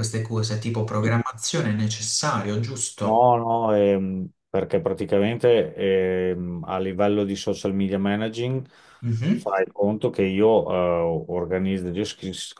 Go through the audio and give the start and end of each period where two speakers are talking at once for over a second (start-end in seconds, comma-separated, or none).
none